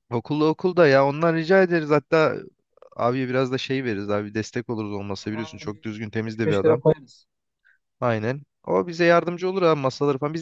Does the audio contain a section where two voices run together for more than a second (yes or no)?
yes